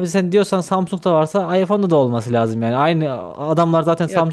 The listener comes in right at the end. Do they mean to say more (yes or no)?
no